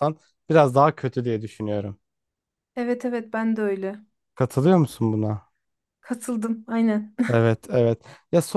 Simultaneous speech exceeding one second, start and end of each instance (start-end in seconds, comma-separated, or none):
none